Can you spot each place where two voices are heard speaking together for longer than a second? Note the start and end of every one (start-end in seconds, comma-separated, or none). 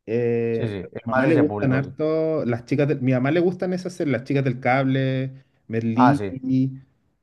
0.5-1.9